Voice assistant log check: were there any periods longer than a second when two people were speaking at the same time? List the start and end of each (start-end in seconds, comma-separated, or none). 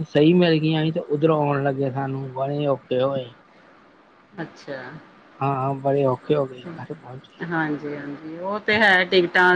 none